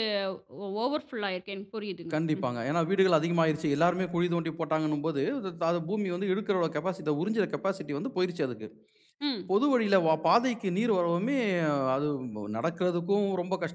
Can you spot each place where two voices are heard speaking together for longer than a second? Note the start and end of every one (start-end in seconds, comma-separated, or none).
none